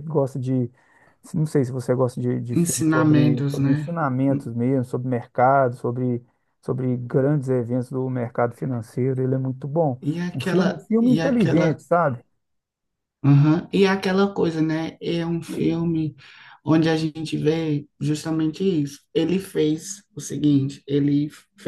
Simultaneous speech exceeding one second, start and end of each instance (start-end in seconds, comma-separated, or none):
2.5-3.9, 10.0-11.8